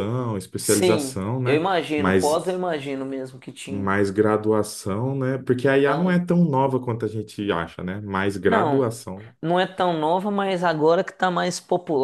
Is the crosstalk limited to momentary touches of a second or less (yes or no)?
no